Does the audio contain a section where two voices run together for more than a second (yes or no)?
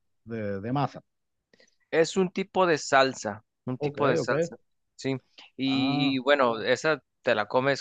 no